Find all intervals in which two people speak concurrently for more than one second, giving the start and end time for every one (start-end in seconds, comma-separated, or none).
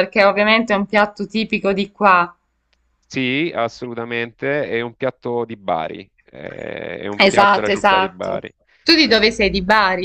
7.2-8.4